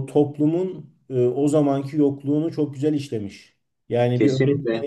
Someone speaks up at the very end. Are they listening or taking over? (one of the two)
listening